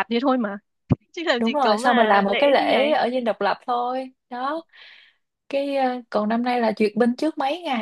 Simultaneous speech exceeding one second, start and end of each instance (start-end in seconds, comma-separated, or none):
1.4-2.9